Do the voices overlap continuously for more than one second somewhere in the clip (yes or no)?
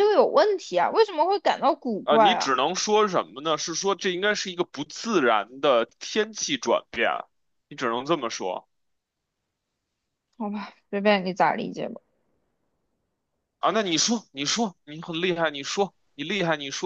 no